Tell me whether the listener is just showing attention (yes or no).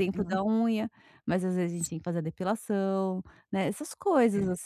yes